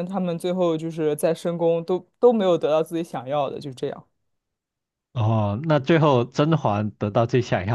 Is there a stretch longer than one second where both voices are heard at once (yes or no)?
no